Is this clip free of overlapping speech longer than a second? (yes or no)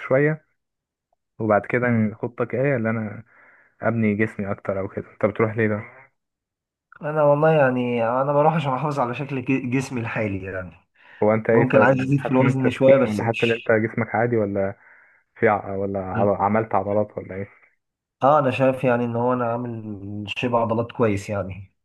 no